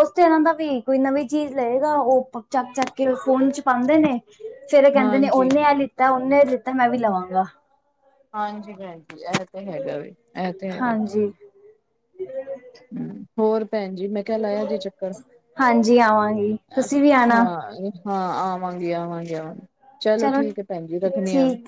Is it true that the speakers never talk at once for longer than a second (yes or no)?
yes